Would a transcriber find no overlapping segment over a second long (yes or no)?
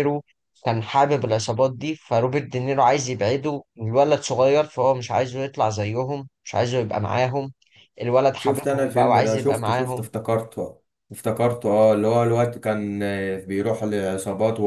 no